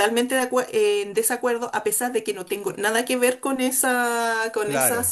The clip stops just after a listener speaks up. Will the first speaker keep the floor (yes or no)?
yes